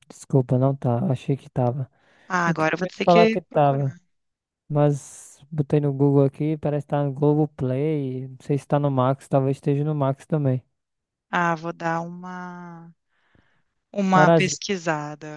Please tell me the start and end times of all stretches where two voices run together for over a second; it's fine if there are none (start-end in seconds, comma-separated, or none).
2.4-4.0